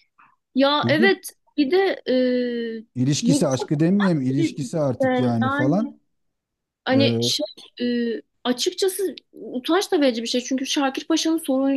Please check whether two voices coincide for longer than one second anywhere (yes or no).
no